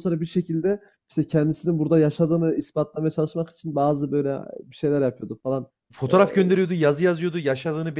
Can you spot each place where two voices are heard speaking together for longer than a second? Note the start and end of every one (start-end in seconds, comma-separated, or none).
none